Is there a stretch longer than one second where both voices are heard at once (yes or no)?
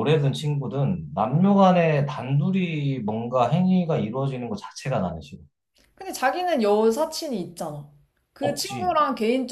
no